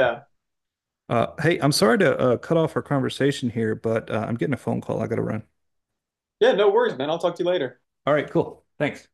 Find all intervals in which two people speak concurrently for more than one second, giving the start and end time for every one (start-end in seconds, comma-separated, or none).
none